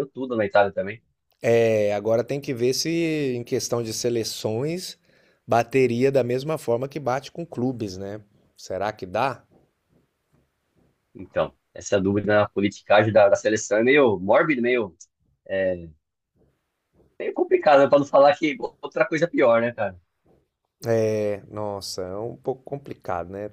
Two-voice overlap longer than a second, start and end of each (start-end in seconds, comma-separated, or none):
none